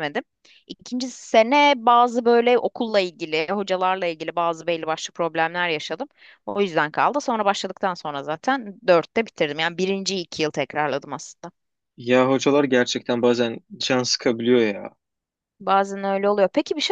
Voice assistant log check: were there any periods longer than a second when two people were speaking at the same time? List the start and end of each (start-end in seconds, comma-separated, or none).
none